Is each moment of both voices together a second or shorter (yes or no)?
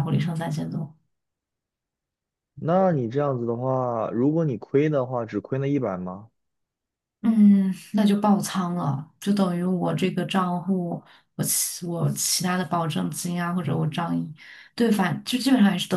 yes